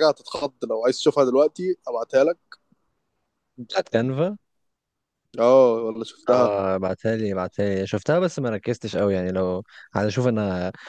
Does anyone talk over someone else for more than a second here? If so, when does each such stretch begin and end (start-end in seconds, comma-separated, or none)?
none